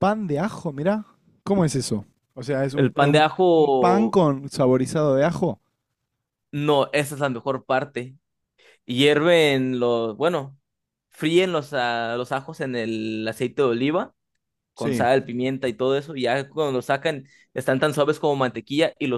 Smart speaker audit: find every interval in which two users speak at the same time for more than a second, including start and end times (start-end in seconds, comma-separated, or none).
2.7-4.2